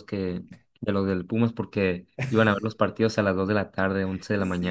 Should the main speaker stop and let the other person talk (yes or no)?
yes